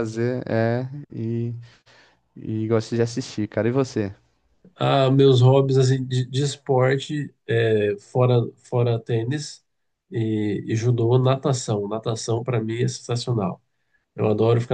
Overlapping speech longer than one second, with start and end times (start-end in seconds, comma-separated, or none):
none